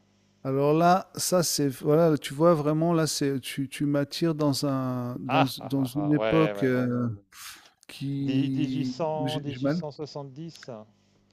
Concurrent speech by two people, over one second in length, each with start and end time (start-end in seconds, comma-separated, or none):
5.3-7.0, 8.2-9.8